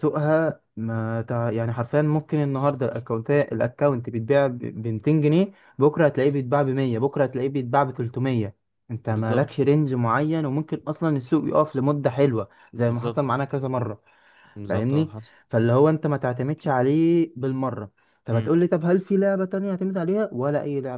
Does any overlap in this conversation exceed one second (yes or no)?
no